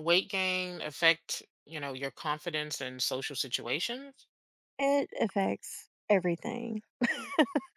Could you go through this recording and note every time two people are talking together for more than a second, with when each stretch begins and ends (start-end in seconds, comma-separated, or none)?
none